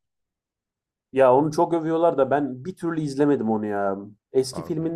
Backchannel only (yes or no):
yes